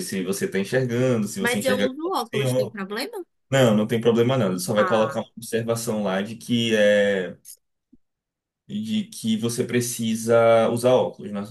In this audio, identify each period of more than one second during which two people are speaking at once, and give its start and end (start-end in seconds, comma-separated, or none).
1.4-2.8